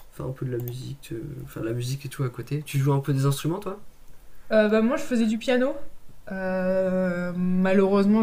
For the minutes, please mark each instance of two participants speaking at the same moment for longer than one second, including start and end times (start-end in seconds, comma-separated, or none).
none